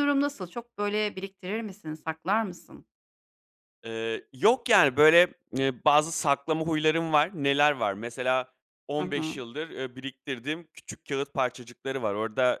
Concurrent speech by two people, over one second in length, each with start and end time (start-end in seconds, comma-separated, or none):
none